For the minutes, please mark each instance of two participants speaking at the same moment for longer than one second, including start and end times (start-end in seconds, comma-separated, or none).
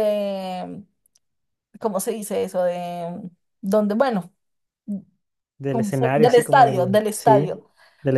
5.7-7.5